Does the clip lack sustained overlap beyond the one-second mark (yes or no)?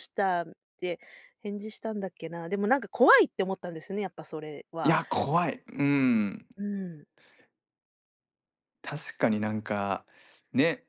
yes